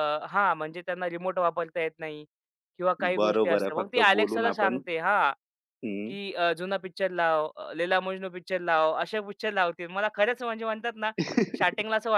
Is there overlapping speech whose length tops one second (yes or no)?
yes